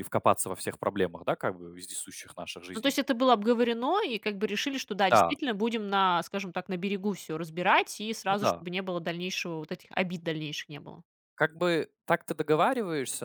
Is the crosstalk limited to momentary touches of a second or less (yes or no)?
yes